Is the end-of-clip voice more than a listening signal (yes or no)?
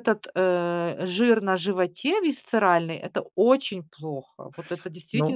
yes